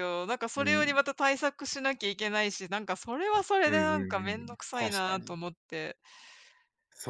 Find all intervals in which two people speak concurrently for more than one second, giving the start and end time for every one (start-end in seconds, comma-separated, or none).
3.6-5.4